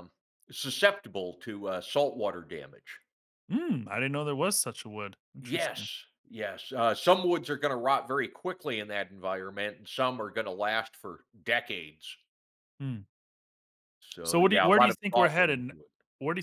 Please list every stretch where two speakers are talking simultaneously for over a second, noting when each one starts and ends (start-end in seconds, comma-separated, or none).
14.2-15.7